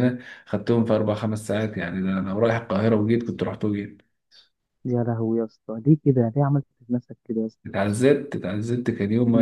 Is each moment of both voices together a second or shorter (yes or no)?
yes